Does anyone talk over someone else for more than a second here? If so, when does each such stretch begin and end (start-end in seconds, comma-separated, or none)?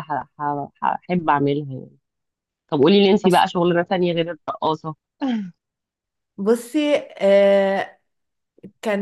none